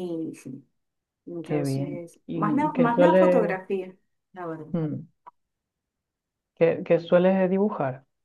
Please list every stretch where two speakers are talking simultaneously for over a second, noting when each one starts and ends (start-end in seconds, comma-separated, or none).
1.4-3.6